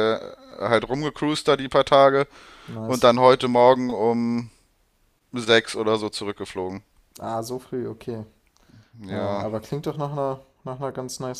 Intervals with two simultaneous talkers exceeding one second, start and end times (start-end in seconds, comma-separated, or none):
none